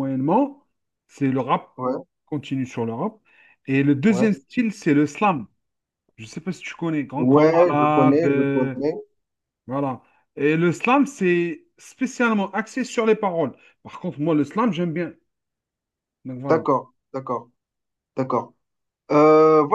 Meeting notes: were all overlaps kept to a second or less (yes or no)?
no